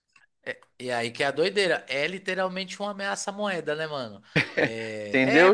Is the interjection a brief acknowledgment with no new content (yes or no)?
no